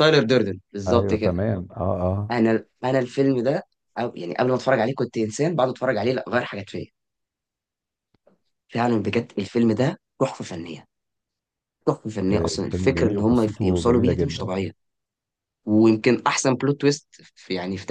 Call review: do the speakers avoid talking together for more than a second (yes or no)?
no